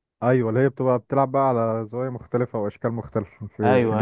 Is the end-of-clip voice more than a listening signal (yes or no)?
yes